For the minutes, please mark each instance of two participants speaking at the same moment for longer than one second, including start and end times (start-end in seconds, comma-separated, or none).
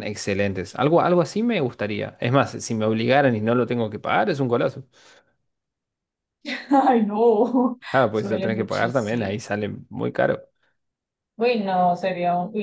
7.9-9.4